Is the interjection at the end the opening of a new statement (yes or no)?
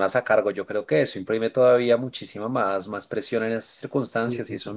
no